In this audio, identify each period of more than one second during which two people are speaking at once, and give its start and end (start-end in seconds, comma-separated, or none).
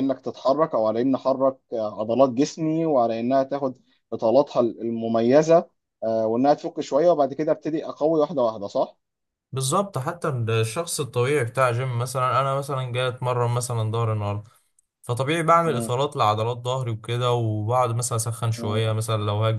none